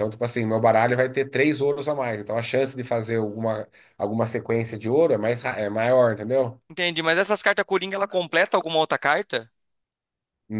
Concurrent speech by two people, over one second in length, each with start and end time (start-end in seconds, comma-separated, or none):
none